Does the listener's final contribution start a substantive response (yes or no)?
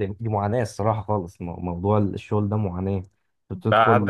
yes